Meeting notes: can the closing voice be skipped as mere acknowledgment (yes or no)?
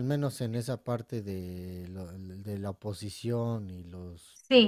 no